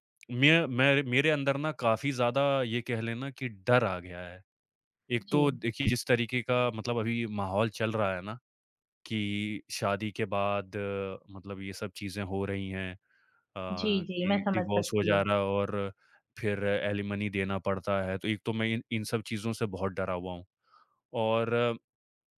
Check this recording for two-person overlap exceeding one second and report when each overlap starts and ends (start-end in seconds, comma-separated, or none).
13.7-15.2